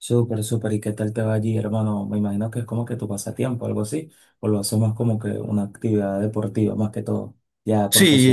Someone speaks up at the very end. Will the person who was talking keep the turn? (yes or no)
no